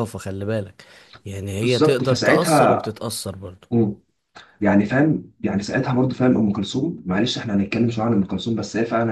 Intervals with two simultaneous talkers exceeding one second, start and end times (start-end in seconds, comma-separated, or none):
1.6-2.9